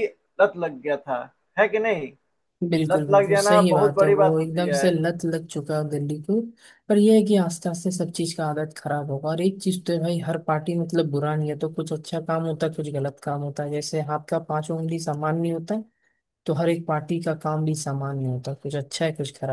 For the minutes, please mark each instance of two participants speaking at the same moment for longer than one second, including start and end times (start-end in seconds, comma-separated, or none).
2.9-4.9